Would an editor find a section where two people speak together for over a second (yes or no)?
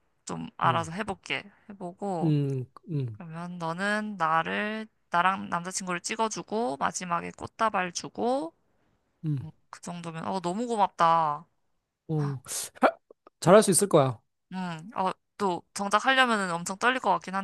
no